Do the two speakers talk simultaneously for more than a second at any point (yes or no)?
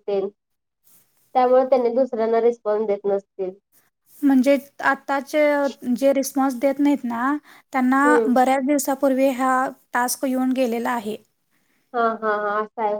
no